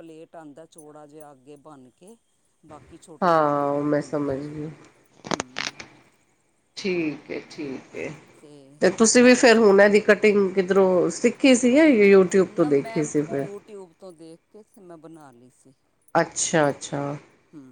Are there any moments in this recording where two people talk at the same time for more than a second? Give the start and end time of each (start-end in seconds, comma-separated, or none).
3.2-4.5